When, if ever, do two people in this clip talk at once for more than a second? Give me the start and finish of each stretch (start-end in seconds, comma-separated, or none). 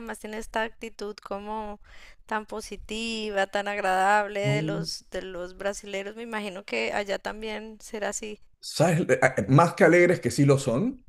none